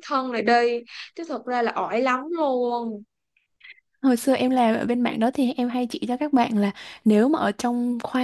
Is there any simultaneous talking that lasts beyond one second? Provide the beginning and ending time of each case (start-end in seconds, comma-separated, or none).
none